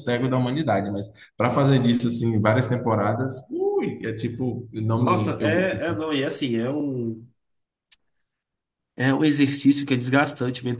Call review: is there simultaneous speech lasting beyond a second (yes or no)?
no